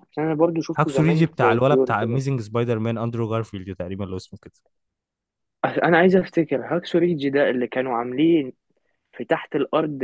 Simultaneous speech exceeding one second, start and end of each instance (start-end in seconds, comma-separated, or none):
0.8-2.2